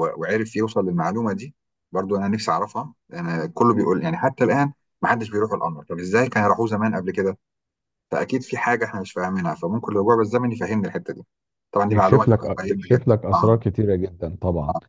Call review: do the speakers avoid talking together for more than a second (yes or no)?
no